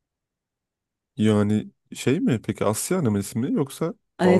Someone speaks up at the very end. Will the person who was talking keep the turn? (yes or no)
no